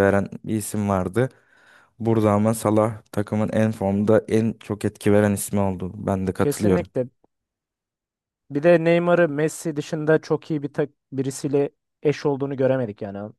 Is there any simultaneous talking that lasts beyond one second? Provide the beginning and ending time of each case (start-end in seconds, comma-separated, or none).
none